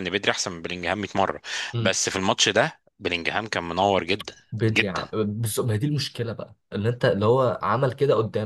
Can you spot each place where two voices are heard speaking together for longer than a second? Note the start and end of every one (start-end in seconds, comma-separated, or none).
none